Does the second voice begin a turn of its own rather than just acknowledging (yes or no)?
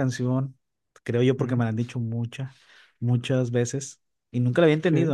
no